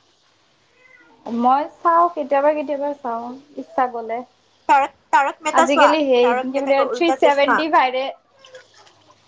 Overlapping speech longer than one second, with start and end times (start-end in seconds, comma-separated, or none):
5.6-7.6